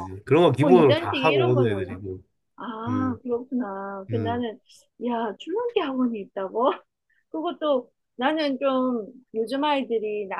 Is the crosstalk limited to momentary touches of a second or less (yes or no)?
no